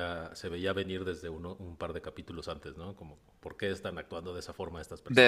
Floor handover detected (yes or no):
yes